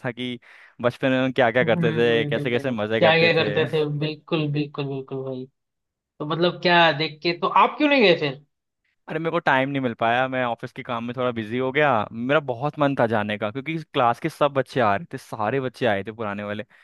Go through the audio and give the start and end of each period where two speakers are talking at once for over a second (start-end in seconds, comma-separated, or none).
1.6-3.5